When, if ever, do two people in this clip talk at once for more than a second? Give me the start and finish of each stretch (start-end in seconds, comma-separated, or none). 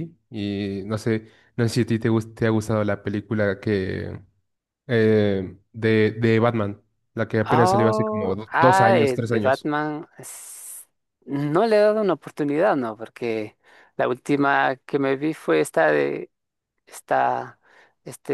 7.5-9.7